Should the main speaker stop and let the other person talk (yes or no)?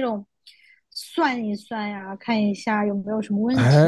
yes